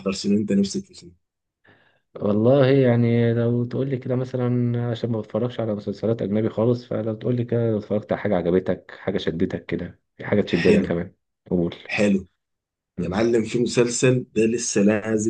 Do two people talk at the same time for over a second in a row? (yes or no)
no